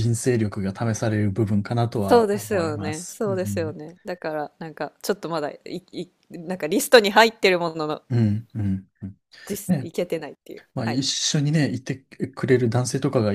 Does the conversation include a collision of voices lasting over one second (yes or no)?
yes